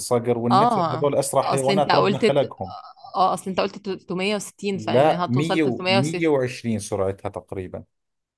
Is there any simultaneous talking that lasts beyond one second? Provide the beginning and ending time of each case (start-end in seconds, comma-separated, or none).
0.5-2.2, 4.7-6.3